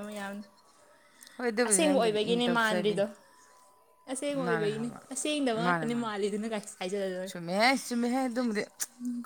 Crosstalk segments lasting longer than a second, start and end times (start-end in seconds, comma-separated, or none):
1.7-3.0